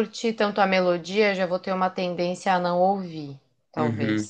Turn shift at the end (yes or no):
yes